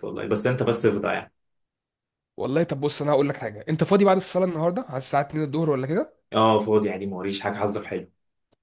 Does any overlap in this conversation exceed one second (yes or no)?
no